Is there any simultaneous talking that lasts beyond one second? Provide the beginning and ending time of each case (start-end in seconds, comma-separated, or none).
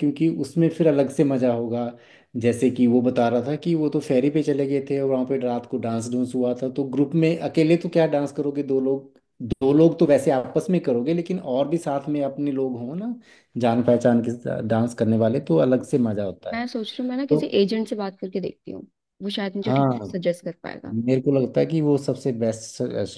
none